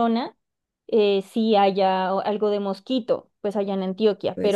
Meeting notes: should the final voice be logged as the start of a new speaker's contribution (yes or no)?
no